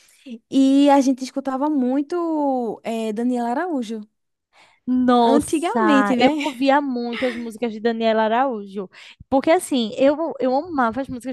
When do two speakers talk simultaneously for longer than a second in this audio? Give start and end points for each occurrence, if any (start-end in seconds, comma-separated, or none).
5.2-6.4